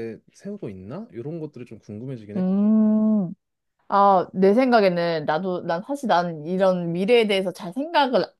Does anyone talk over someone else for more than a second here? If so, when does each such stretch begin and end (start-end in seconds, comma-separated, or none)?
none